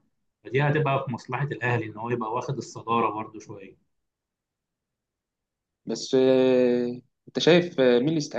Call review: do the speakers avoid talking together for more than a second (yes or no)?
yes